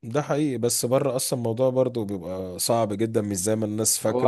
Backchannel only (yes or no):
no